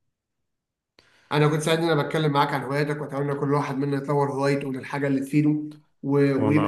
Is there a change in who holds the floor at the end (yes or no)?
no